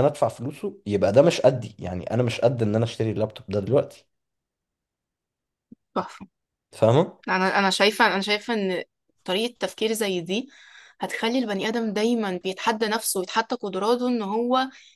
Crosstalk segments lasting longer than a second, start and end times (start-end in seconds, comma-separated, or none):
none